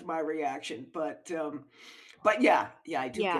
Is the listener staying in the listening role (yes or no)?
no